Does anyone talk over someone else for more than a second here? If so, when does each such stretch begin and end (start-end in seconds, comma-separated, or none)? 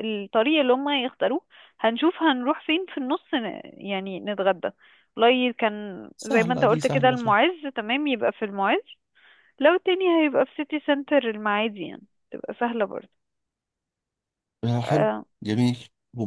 6.2-7.4